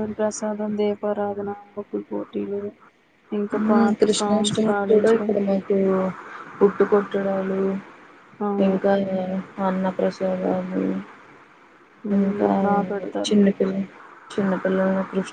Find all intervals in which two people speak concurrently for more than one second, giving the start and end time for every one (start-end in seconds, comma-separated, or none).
none